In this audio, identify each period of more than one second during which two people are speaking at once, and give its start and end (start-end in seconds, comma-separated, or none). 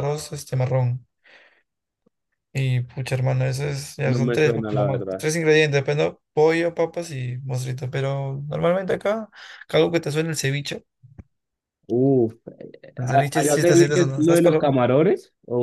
4.0-5.3, 13.0-14.8